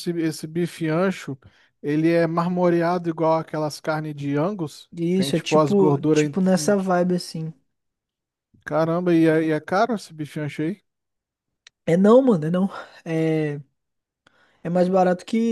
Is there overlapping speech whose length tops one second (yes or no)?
yes